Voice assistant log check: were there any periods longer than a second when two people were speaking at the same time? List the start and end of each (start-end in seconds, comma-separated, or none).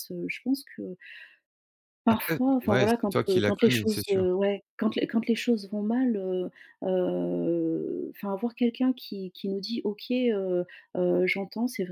2.1-4.2